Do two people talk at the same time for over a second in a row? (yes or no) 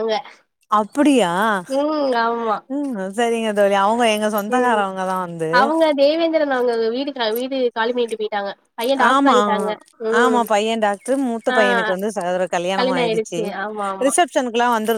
no